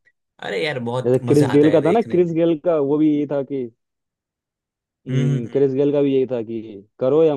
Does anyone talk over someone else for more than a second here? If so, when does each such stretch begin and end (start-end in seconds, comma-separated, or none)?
1.1-2.4